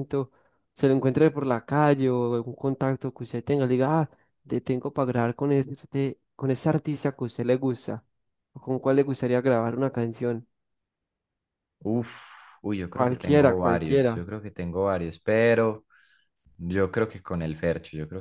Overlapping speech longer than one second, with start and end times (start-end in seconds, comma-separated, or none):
12.9-14.2